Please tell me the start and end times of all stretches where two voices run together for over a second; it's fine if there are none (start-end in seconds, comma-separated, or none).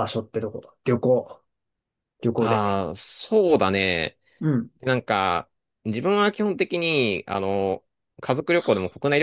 none